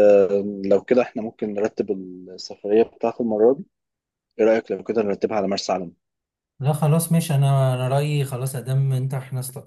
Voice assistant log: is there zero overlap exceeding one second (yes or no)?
yes